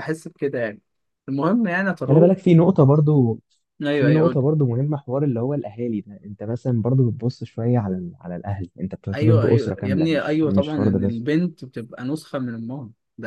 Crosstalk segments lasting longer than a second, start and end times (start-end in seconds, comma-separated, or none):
9.1-11.2